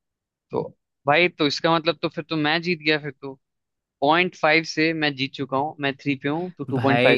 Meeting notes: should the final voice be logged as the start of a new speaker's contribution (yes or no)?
yes